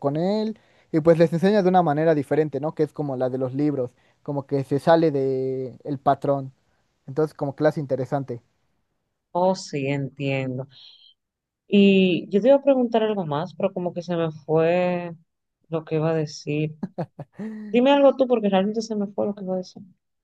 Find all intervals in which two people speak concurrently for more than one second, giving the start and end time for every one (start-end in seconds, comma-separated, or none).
none